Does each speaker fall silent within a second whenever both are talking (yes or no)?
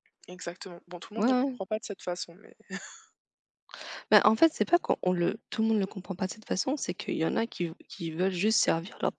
yes